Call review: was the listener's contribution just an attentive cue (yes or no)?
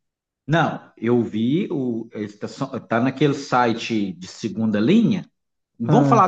yes